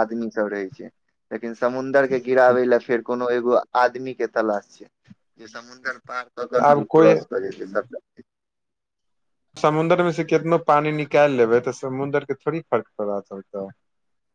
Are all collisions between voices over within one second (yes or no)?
yes